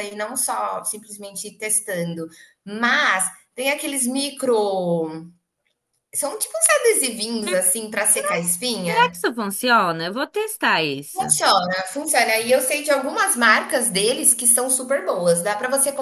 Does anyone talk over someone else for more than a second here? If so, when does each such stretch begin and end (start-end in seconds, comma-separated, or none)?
none